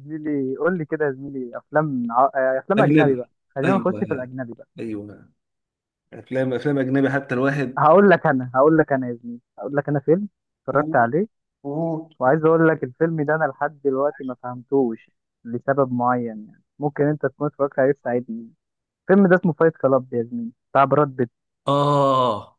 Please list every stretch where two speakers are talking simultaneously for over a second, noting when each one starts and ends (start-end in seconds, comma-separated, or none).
2.8-4.3